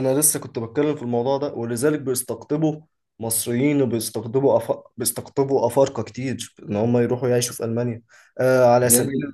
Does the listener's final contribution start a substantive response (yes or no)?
no